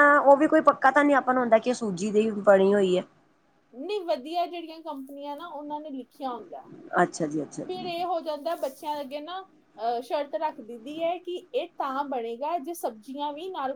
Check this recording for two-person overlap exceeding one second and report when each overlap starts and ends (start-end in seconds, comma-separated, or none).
none